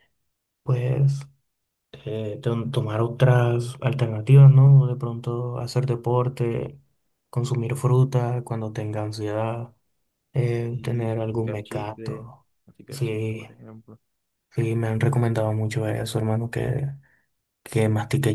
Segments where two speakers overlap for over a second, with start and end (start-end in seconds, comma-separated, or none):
10.7-12.3